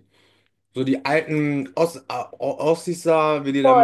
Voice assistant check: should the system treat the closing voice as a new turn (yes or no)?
yes